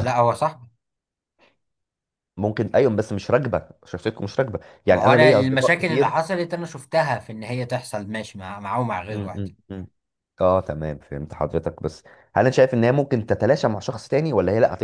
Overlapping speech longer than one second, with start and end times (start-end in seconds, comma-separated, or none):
4.9-6.1